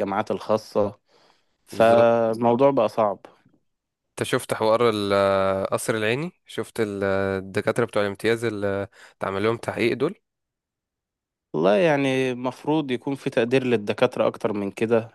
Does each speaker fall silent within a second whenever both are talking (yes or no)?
yes